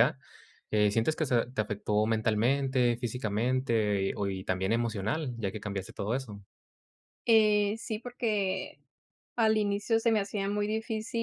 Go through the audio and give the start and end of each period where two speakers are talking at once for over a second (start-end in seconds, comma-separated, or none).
none